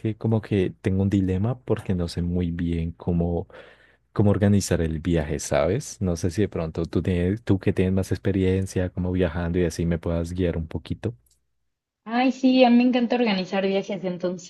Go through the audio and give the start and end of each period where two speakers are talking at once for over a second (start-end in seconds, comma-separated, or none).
none